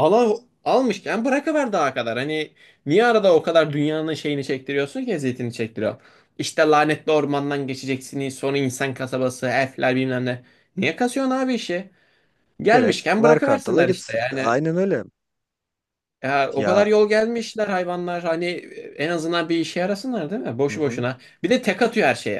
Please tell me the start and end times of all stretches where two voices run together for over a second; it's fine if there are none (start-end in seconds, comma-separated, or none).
12.7-14.6